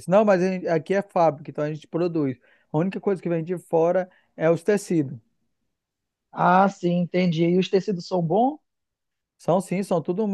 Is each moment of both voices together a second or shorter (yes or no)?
yes